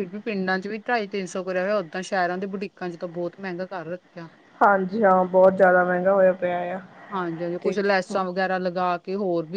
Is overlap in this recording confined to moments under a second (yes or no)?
yes